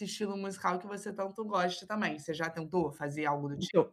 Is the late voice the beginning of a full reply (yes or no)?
yes